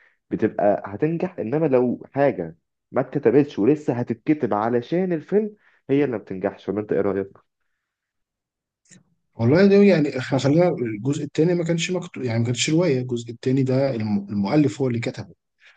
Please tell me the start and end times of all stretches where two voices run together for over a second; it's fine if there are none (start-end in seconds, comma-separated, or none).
none